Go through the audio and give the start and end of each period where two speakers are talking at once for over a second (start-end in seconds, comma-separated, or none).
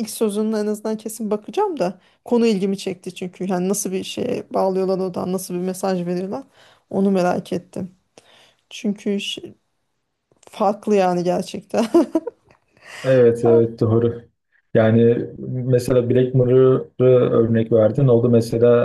none